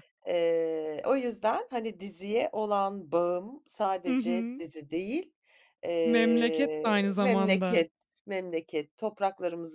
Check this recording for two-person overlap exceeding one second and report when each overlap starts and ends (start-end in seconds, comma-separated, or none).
6.0-7.9